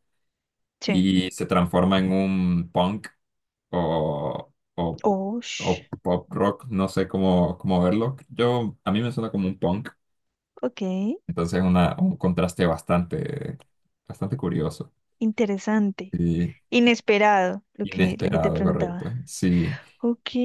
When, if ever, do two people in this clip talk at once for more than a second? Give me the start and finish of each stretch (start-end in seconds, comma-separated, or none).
17.8-19.1